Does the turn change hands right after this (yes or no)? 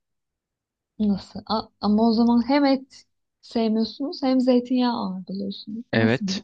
yes